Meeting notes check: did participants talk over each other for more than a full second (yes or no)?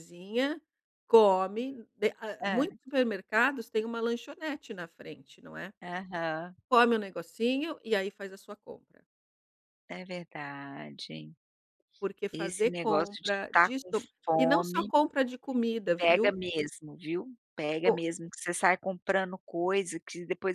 yes